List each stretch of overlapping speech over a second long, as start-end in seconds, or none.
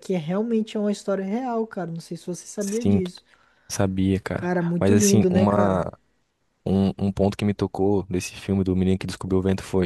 4.3-5.8